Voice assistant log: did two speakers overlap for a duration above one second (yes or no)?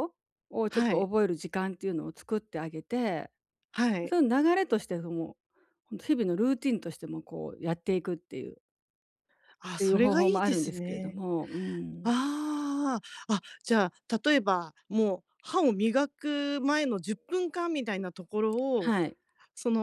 yes